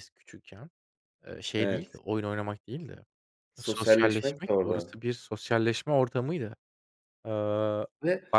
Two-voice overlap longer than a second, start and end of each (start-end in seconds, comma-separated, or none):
3.6-5.0